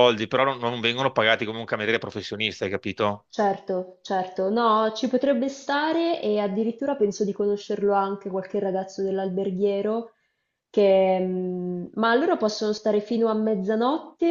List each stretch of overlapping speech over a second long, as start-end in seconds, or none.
none